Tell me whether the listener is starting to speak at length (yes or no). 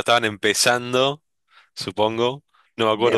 no